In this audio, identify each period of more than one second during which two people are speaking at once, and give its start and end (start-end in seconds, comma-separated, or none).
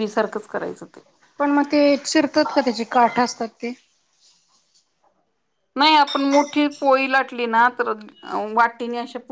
none